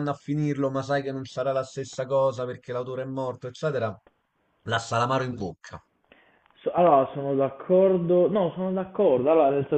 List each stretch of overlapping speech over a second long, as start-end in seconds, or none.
none